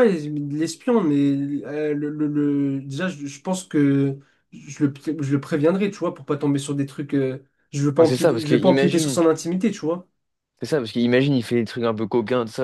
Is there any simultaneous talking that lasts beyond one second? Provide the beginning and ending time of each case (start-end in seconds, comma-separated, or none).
8.0-9.2